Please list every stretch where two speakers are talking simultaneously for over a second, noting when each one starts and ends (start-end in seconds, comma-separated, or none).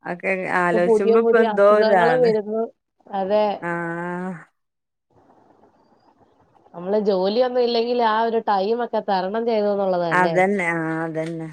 0.7-2.3